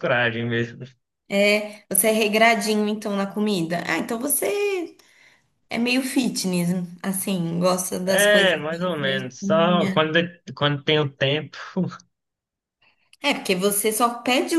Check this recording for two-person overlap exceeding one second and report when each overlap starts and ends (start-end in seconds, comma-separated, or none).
8.1-10.0